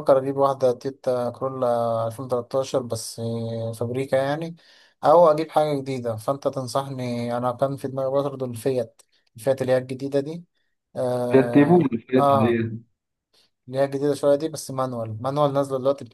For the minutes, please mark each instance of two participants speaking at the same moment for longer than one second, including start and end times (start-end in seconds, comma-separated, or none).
11.3-12.6